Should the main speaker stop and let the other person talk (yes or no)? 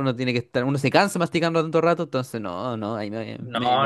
yes